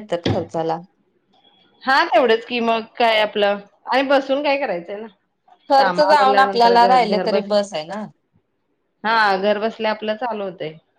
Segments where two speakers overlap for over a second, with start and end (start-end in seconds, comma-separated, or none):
5.8-7.6